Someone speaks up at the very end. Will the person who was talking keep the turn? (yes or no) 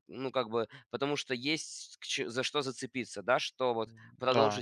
yes